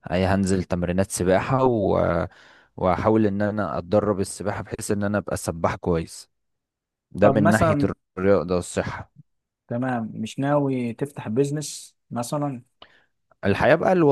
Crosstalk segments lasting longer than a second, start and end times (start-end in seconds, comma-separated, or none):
none